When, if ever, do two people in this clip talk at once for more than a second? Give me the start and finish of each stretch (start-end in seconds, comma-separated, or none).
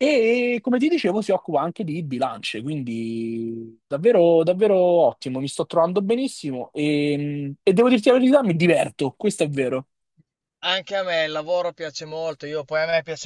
none